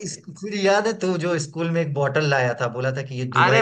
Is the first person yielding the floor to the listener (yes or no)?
yes